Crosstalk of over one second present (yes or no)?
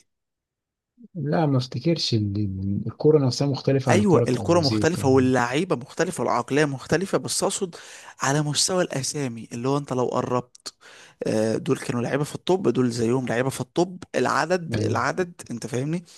yes